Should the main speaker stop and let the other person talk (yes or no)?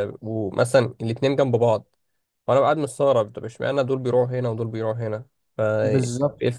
yes